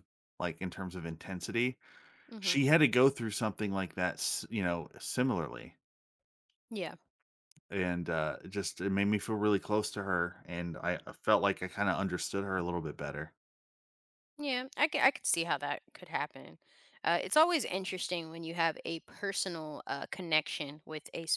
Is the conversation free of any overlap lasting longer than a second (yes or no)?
yes